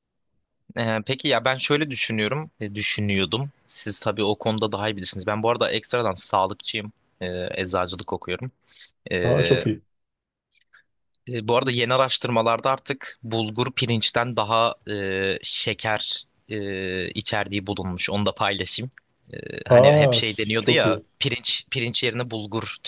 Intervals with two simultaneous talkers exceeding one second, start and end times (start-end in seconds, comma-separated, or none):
19.7-21.1